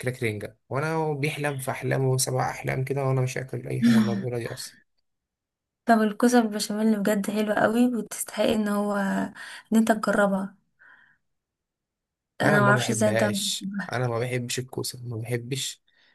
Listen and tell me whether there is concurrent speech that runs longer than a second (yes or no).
yes